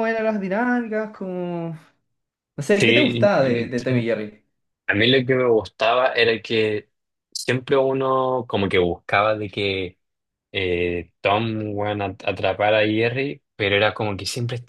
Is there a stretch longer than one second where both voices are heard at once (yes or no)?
no